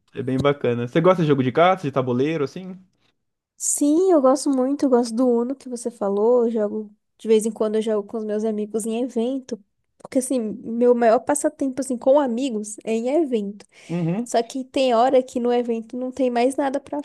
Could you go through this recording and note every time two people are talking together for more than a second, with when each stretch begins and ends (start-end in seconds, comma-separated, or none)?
none